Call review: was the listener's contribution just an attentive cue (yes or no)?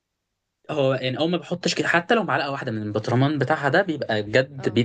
yes